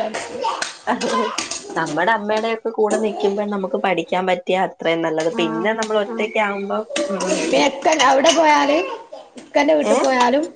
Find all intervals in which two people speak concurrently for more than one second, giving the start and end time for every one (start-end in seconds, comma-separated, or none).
none